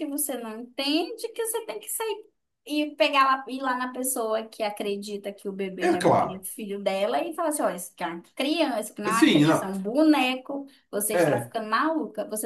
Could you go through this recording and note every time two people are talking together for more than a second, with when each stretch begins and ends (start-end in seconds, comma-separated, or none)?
none